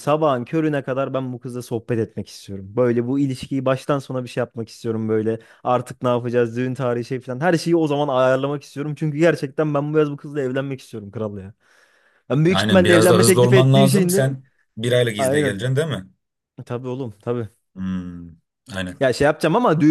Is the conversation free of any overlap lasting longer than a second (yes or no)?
no